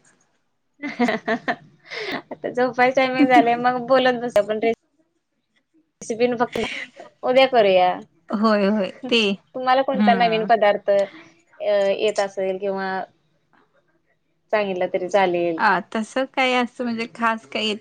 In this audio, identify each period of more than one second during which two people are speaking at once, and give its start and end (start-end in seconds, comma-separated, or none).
none